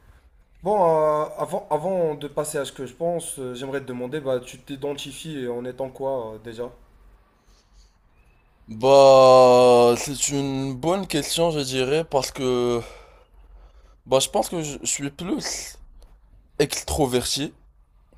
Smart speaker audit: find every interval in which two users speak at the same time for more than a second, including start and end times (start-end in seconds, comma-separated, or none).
none